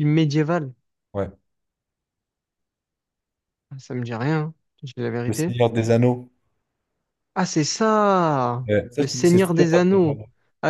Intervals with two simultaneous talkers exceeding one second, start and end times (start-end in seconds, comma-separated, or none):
8.7-10.2